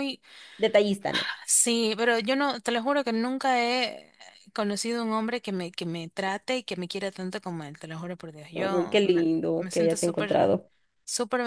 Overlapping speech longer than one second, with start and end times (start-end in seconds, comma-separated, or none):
8.5-10.5